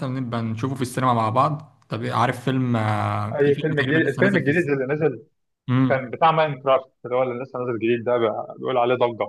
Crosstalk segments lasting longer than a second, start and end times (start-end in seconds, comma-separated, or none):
3.3-4.7